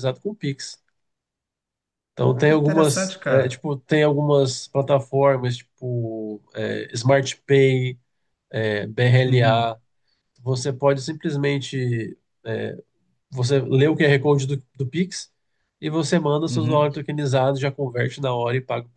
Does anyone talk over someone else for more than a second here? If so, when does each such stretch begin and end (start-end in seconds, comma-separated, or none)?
2.2-3.6